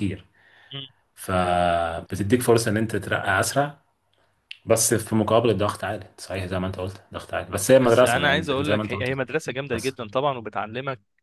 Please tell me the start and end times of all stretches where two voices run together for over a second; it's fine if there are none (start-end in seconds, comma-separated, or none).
7.8-9.1